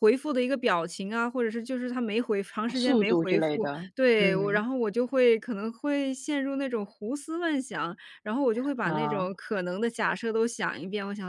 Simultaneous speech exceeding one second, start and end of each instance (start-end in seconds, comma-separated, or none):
2.7-4.6